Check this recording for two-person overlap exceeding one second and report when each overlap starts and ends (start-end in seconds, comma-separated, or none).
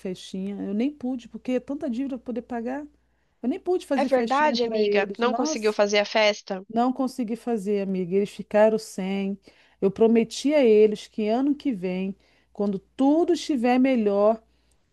3.9-5.8